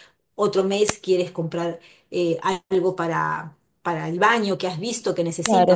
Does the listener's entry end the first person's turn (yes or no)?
yes